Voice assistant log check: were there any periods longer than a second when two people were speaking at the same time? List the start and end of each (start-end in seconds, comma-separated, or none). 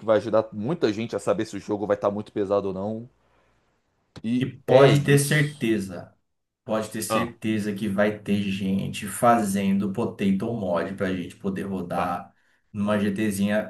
4.4-5.6